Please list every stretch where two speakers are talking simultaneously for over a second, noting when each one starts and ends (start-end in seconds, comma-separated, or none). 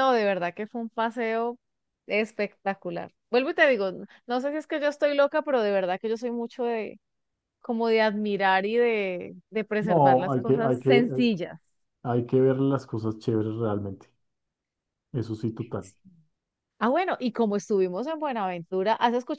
9.8-11.1